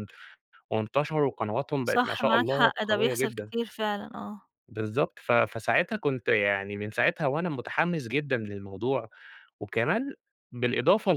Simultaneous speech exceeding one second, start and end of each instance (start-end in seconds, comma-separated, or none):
1.8-3.5